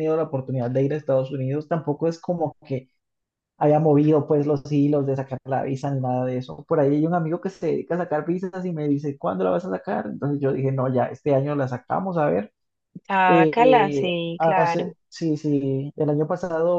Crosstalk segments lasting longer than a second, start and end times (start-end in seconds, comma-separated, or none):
13.3-14.9